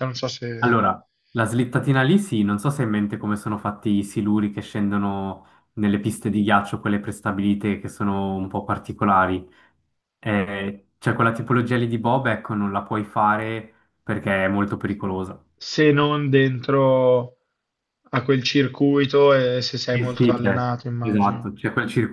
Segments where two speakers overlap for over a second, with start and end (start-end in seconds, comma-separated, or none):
19.9-21.5